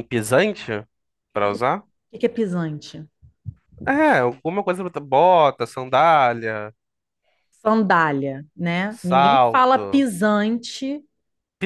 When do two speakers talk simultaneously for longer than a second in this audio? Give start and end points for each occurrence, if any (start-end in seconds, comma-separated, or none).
8.9-10.1